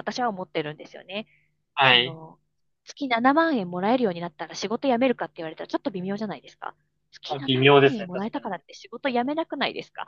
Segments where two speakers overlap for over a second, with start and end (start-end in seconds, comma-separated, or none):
7.3-8.5